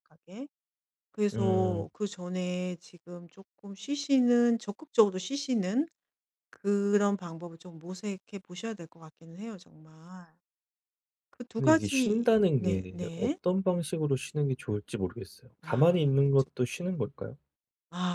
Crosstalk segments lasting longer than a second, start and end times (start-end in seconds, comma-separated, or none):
11.6-13.4, 15.6-17.0